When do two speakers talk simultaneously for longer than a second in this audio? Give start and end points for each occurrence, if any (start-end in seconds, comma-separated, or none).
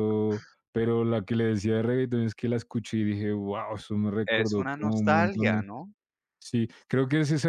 4.3-5.6